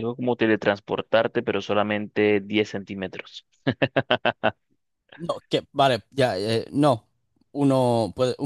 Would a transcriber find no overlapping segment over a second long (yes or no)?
yes